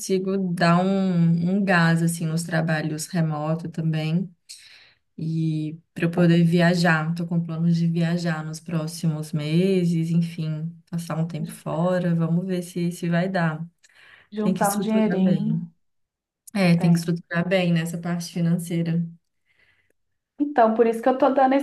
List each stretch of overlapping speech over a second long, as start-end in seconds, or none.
14.4-15.6